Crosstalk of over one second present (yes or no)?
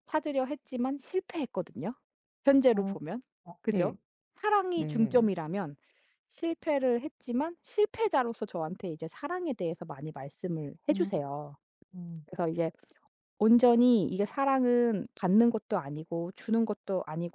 no